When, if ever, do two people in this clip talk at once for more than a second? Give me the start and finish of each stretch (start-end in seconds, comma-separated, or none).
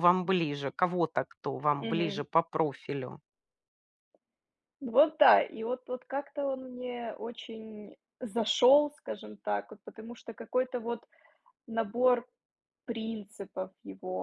none